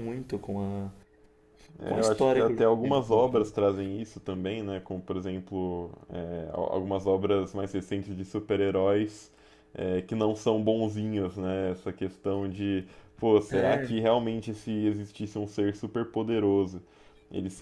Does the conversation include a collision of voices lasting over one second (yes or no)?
yes